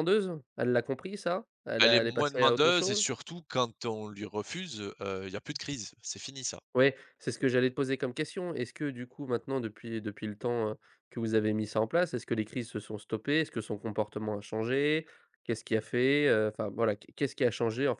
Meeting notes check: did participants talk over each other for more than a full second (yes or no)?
yes